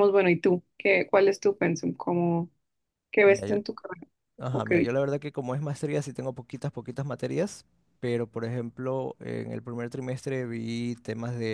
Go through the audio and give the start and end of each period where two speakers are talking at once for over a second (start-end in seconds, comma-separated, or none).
none